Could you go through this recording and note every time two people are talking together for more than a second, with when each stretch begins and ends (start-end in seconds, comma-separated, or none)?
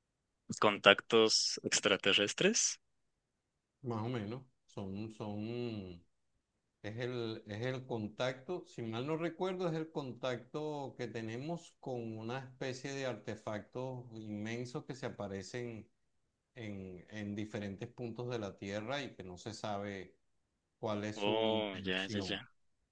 21.1-22.4